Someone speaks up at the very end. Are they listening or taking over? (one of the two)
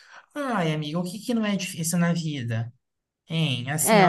listening